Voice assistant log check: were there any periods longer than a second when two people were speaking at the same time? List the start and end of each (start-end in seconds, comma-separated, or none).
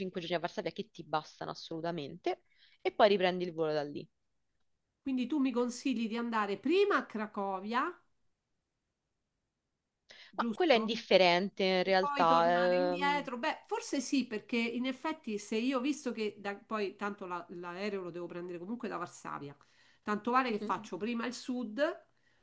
11.8-13.3